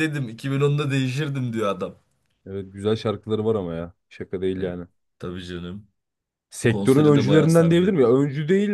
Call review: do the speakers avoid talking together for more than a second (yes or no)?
no